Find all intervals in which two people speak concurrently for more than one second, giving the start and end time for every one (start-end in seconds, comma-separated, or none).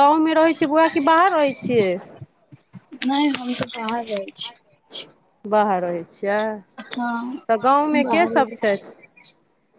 7.0-8.7